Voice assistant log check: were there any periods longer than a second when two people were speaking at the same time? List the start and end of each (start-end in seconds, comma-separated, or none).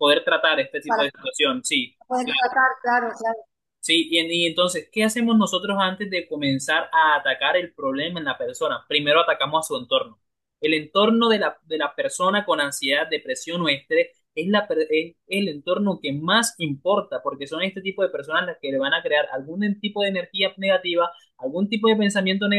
none